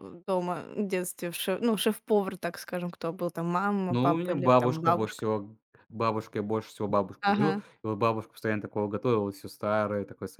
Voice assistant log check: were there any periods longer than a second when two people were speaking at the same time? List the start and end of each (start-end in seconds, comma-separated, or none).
3.9-5.2